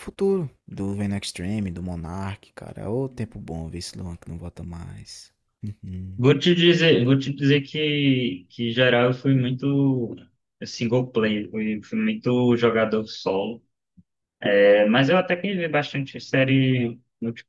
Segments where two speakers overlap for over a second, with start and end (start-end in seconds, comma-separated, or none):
none